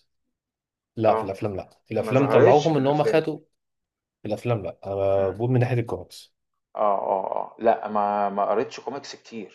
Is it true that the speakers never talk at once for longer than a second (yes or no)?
no